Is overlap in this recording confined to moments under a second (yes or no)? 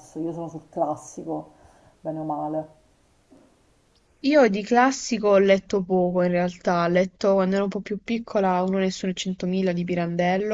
yes